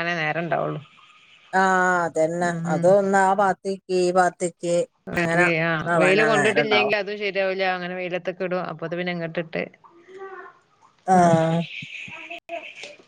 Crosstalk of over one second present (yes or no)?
no